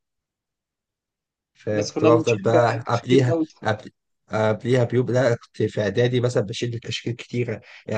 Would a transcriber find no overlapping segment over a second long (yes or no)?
no